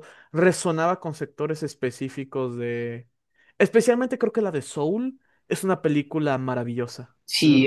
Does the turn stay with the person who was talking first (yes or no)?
no